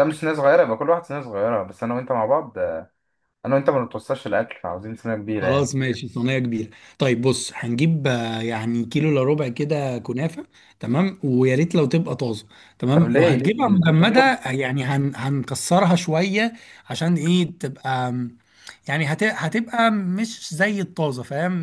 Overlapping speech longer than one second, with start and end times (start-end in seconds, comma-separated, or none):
12.9-14.4